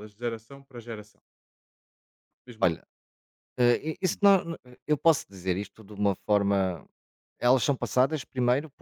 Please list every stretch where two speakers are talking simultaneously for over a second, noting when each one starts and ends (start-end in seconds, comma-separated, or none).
none